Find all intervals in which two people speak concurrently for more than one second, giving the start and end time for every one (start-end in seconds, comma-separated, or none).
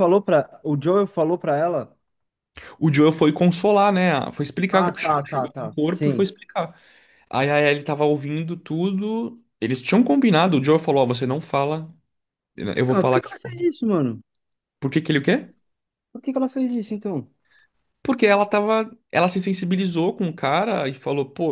4.7-6.2